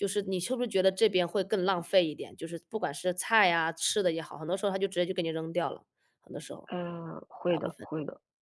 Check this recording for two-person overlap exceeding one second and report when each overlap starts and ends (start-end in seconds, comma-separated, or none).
none